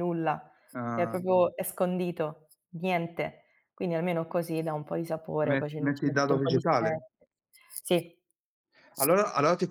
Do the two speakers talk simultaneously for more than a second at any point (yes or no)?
yes